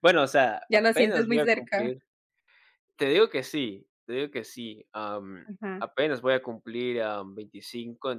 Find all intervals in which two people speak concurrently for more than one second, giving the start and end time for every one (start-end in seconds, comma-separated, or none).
0.7-1.9